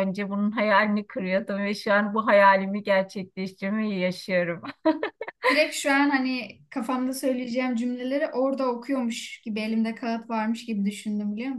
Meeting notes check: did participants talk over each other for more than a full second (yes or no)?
no